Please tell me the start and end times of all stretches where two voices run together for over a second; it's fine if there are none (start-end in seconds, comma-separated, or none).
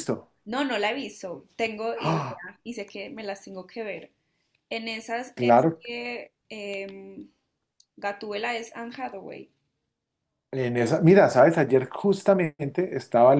none